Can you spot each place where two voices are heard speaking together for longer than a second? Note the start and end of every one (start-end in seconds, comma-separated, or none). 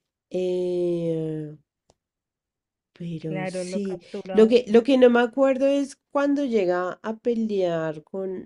3.2-4.8